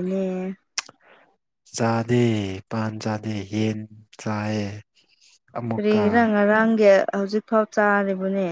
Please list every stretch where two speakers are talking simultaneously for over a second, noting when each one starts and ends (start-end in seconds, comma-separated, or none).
none